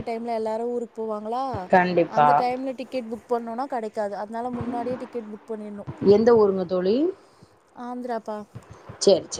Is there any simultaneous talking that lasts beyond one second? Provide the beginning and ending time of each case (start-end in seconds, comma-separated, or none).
none